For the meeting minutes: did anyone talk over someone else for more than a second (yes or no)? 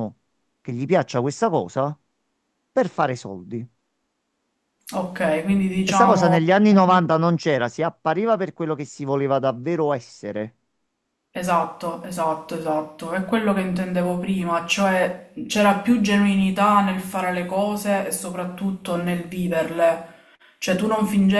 no